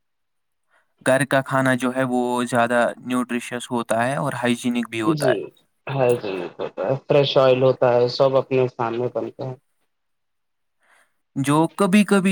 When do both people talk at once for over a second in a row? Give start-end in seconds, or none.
none